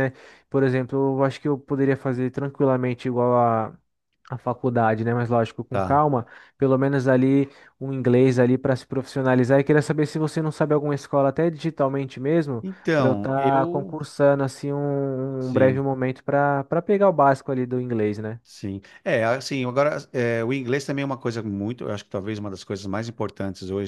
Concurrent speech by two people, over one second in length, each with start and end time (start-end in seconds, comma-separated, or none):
12.6-14.0